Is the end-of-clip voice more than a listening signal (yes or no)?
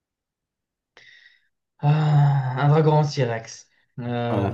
yes